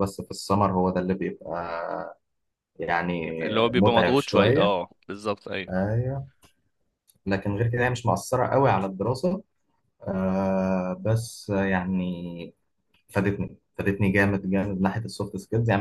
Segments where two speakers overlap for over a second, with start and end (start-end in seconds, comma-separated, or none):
3.4-4.8